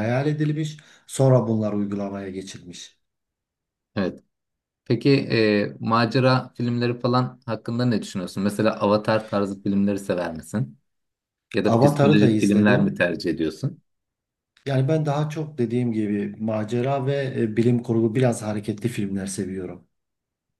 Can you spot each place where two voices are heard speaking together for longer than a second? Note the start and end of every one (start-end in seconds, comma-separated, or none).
11.6-13.1